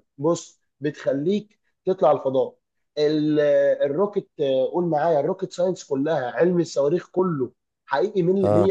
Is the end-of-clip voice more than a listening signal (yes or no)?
no